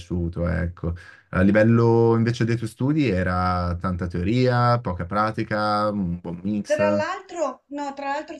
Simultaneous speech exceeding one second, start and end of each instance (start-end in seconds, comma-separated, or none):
none